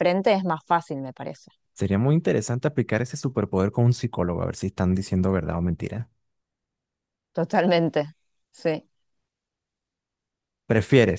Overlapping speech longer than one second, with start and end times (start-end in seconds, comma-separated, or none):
none